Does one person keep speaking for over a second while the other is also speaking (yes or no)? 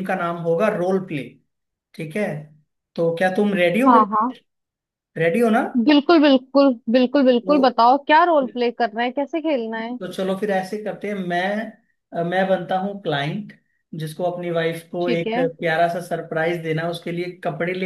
no